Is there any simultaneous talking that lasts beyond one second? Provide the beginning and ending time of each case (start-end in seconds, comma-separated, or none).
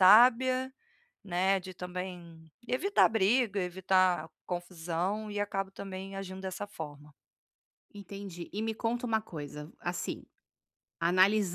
none